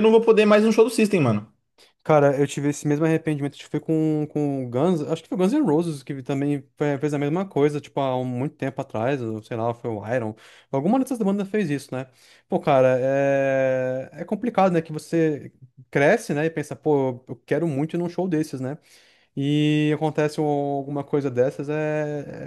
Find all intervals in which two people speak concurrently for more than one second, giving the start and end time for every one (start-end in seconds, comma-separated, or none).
none